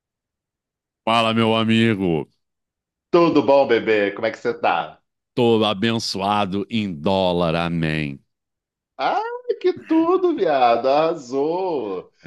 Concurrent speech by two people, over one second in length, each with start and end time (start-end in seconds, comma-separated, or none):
none